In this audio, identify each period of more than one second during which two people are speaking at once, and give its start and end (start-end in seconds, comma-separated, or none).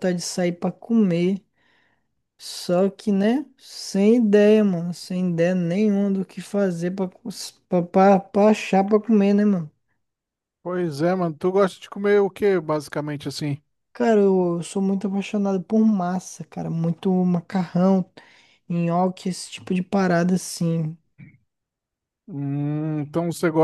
none